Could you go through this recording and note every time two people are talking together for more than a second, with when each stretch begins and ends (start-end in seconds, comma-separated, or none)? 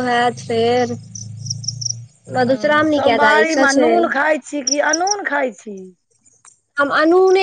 2.5-3.9